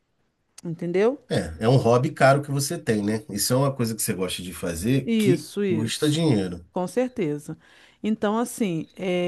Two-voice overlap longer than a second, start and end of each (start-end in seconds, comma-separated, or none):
5.0-6.2